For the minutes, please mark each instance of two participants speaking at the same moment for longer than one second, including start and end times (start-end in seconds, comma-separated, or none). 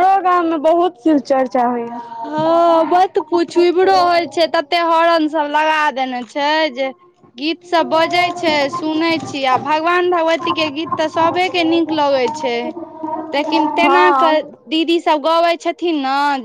none